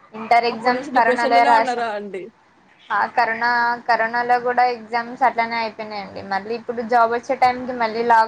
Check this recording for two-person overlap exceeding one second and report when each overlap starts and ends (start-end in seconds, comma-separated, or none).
0.5-1.9